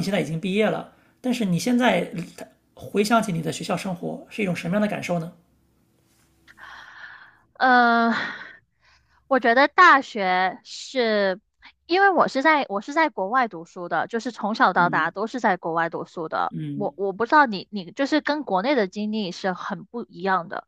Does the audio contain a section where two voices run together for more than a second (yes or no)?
no